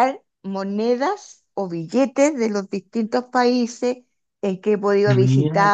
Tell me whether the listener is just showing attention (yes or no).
yes